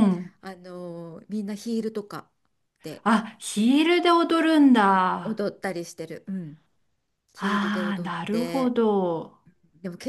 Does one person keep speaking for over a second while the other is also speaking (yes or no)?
yes